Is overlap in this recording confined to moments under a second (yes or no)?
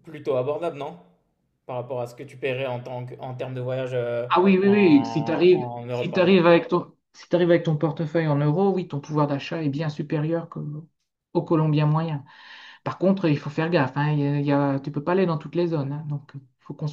no